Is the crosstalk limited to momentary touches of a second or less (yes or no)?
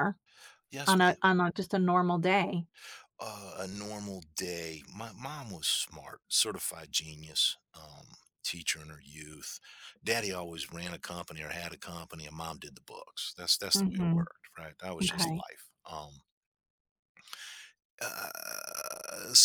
yes